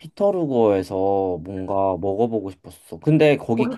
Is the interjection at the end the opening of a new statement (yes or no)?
no